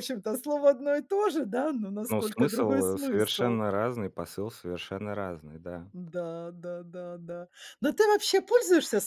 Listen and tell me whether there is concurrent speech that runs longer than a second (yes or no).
yes